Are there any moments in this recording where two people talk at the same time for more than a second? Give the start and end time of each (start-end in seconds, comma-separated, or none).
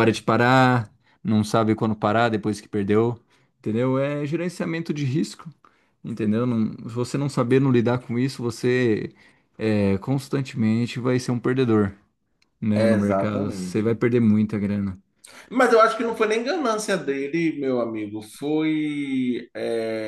12.8-14.0